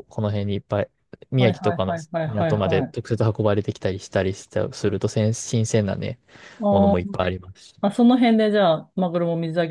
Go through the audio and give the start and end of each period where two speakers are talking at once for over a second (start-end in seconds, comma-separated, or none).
1.4-2.9